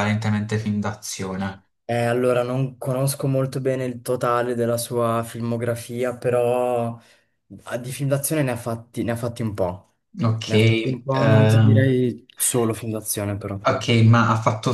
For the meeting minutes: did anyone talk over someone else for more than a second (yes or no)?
yes